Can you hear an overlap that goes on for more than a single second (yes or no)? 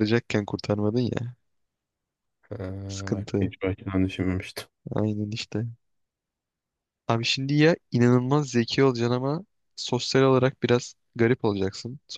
no